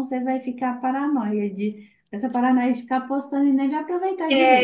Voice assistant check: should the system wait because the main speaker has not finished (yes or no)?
no